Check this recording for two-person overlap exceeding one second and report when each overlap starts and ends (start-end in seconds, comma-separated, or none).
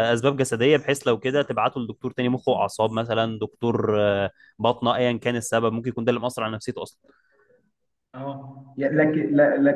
none